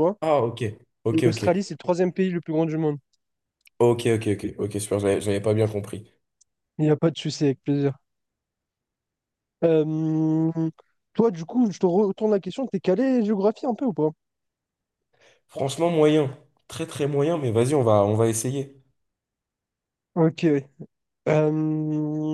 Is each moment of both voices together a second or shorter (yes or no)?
yes